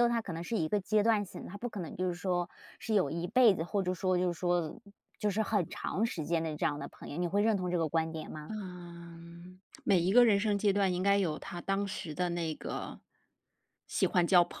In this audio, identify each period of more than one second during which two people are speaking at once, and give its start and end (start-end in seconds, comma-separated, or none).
none